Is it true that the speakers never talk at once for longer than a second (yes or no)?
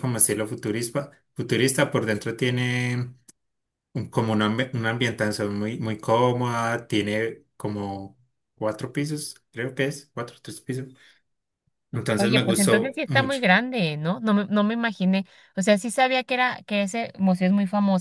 no